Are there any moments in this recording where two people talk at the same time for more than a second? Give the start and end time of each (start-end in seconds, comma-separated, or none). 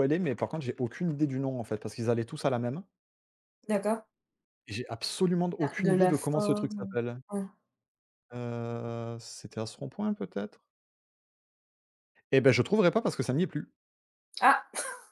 5.6-7.0